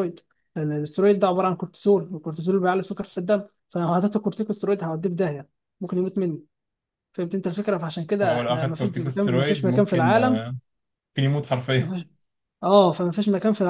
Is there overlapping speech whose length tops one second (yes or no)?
yes